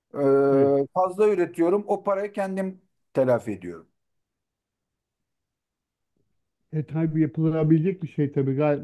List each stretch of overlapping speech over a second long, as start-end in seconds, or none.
none